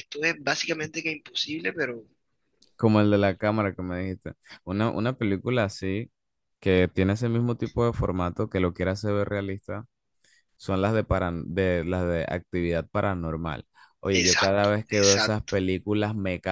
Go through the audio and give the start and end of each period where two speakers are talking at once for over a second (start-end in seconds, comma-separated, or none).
14.1-15.5